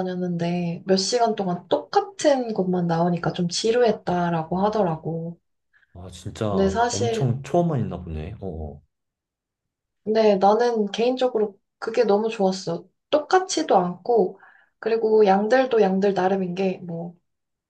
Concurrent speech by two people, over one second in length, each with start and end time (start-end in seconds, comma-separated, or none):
none